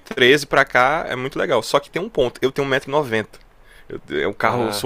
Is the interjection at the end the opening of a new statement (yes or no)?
no